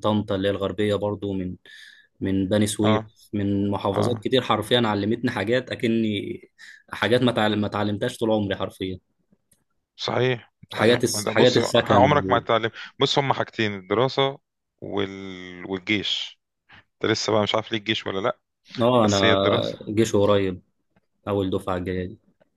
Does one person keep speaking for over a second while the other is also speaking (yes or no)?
yes